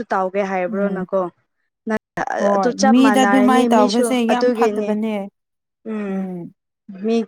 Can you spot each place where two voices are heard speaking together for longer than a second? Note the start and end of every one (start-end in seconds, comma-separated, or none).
2.5-5.0